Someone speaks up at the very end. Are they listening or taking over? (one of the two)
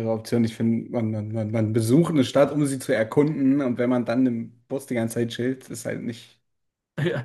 taking over